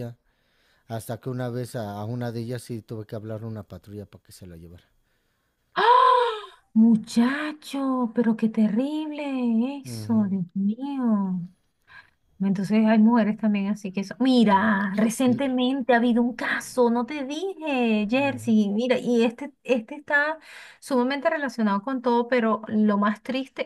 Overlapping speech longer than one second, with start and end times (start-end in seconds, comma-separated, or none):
none